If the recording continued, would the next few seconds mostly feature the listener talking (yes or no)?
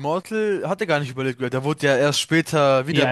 yes